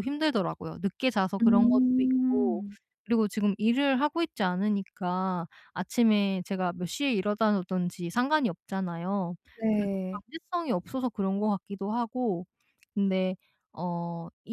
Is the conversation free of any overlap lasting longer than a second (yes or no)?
no